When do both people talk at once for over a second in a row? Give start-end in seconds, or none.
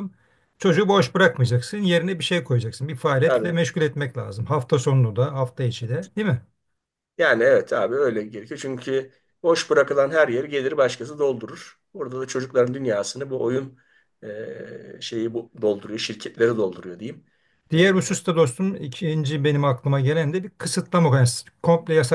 none